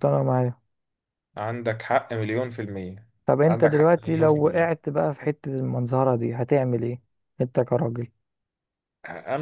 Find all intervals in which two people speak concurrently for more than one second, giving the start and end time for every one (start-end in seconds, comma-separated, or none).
3.4-4.7